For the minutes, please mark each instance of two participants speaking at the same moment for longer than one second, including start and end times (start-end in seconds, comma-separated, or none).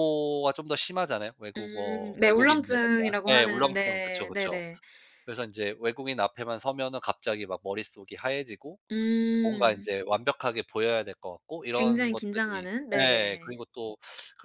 1.6-4.6, 11.7-13.6